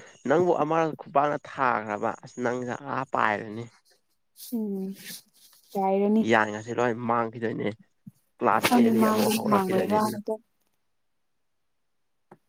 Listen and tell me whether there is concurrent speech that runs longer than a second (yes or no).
yes